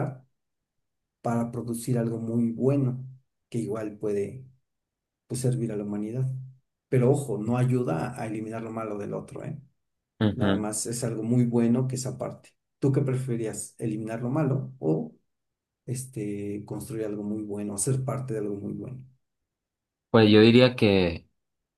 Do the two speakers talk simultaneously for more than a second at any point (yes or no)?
no